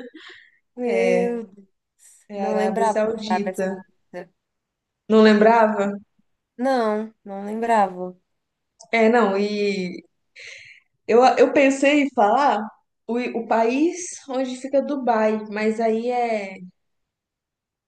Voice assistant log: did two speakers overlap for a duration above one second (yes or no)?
yes